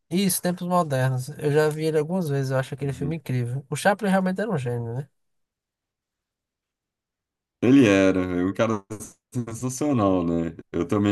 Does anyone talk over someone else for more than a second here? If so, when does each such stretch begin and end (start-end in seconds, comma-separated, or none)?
none